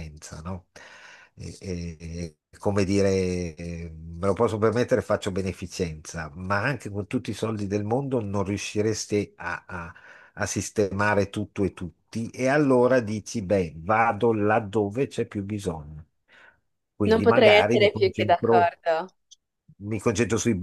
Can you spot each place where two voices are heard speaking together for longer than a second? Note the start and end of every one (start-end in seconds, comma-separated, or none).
17.1-18.7